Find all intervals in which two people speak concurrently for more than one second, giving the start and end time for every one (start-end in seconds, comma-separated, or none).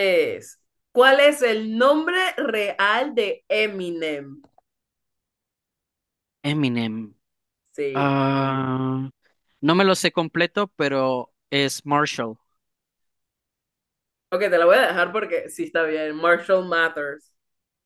none